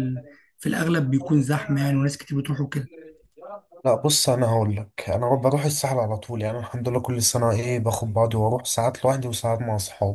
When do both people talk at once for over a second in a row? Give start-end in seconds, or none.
none